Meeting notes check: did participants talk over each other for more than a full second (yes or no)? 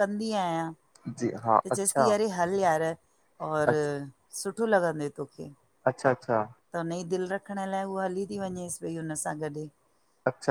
no